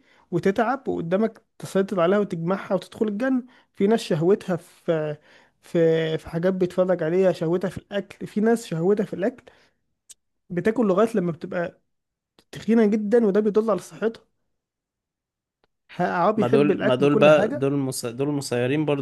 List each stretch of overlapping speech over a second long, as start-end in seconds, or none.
16.4-17.7